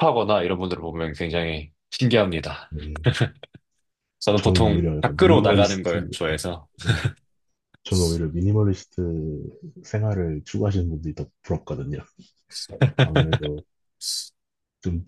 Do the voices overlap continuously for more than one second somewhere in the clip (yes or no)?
yes